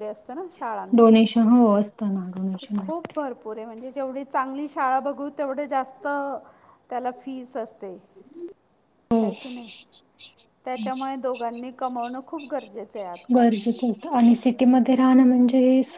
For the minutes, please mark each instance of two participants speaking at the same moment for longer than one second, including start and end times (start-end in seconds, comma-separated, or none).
none